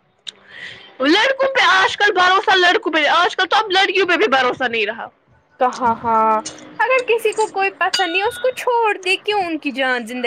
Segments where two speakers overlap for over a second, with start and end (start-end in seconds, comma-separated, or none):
none